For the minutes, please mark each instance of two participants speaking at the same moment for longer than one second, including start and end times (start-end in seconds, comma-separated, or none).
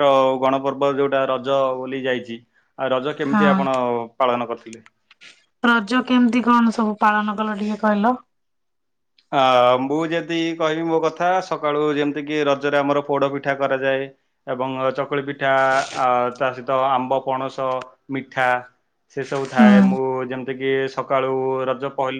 none